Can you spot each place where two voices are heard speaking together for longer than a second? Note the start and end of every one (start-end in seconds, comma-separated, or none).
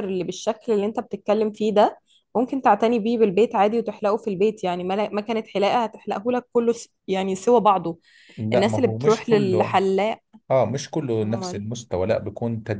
8.5-9.8